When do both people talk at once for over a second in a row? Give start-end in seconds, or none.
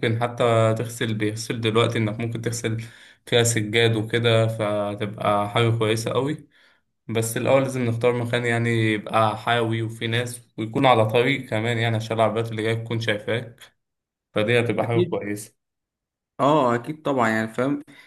none